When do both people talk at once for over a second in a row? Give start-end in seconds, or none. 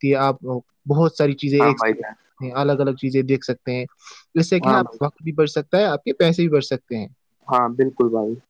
none